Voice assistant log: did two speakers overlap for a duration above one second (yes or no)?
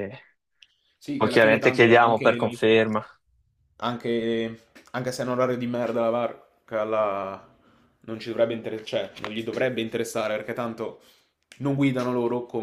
yes